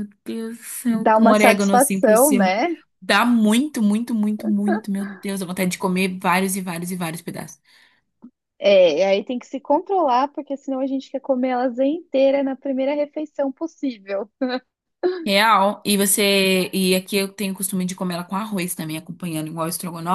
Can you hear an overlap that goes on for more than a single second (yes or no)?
yes